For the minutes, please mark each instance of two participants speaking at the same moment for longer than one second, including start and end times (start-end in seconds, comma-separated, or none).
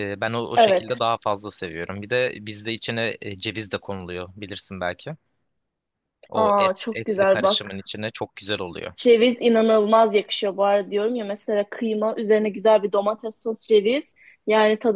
6.3-7.9